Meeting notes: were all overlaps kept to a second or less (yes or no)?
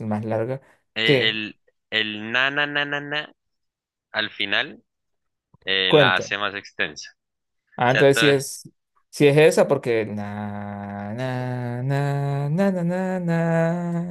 yes